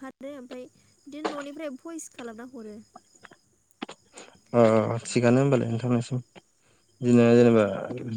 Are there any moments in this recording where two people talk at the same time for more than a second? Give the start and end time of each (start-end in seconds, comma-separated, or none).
none